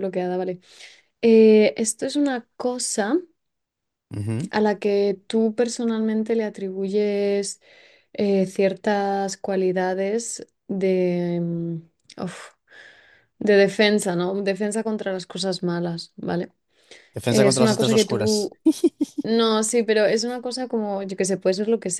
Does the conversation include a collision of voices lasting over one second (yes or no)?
yes